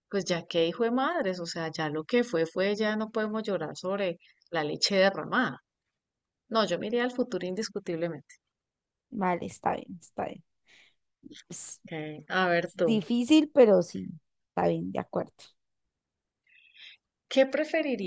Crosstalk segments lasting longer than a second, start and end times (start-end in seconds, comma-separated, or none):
none